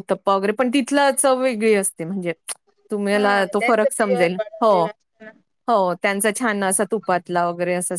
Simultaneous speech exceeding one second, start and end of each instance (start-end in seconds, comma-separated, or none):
3.1-4.9